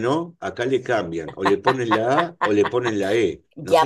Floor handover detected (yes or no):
yes